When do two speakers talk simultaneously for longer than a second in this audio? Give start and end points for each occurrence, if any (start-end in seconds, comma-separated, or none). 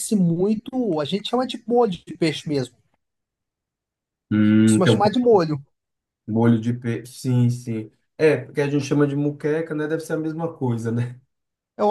none